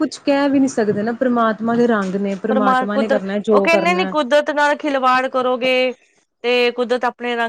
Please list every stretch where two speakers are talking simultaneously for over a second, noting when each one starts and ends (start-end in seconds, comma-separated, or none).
2.5-4.1